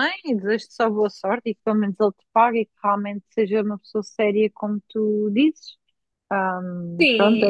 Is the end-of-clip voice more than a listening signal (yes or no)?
yes